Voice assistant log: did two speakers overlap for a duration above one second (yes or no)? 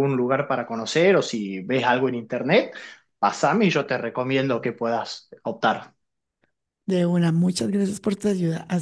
no